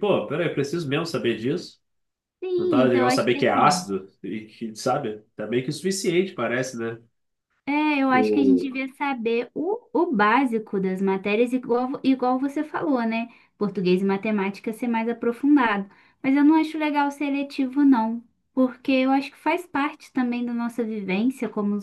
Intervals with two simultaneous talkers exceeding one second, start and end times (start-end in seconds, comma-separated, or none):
2.6-3.9